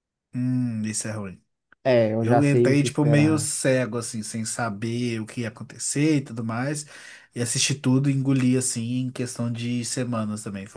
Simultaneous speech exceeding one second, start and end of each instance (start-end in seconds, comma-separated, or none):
2.2-3.5